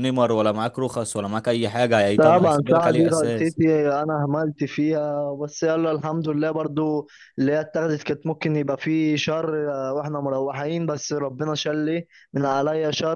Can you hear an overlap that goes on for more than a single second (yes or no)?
yes